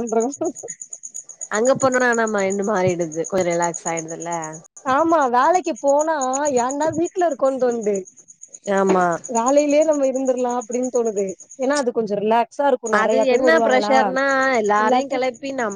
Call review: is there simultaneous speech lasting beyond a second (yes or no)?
no